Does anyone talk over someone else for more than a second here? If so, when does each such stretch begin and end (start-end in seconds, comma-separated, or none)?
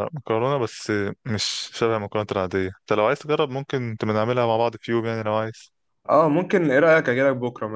none